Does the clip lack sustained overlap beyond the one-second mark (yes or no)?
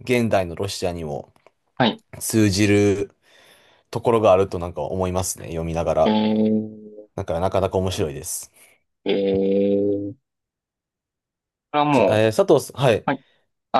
yes